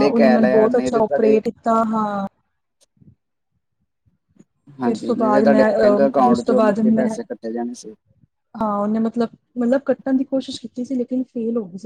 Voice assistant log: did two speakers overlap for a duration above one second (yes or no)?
yes